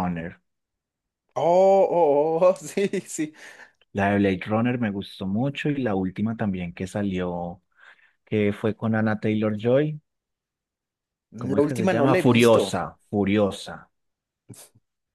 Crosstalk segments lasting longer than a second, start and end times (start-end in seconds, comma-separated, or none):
11.4-12.8